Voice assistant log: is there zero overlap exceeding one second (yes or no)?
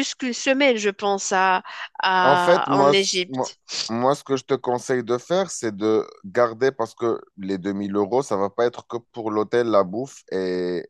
no